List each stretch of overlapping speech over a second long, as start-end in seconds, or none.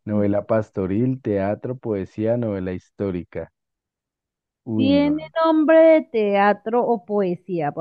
none